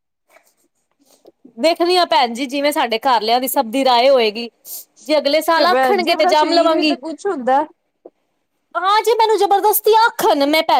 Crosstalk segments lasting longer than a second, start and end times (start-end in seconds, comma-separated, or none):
5.5-7.0